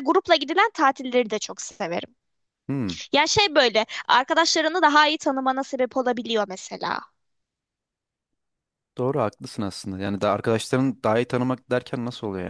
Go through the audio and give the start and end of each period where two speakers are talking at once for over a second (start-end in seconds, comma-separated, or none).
none